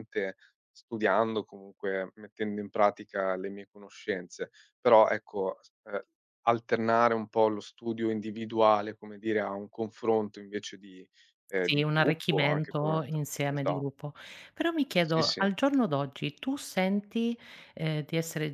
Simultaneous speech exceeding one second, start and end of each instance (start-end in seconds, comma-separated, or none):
11.6-13.8